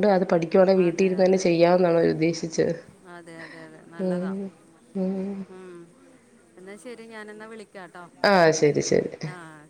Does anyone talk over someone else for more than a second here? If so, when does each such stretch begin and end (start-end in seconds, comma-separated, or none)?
none